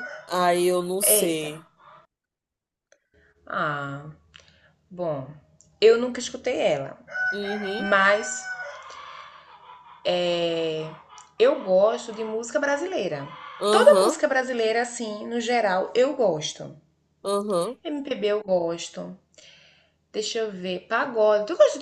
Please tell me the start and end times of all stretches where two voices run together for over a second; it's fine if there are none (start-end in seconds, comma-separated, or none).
none